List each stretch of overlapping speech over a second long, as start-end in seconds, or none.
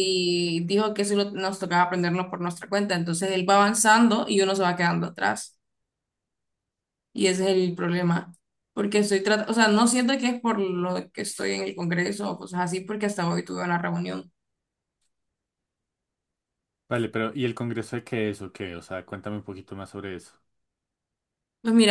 none